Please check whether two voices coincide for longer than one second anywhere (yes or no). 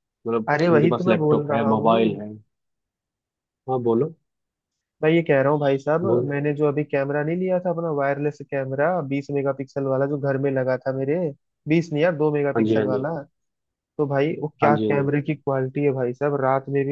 yes